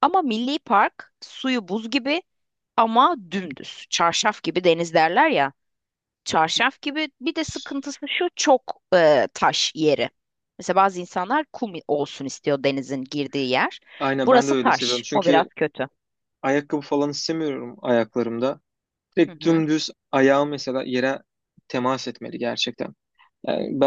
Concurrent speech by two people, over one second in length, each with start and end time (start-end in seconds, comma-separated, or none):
14.2-15.5